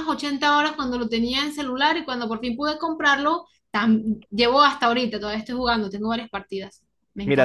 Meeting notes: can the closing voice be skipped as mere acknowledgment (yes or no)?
no